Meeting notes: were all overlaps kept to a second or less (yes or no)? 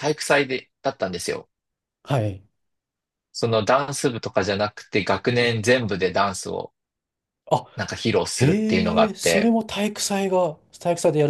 no